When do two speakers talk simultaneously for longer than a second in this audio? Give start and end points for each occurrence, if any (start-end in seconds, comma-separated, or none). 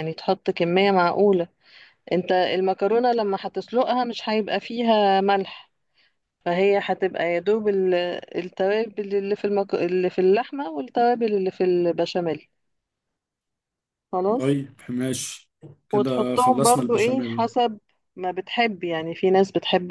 15.9-17.4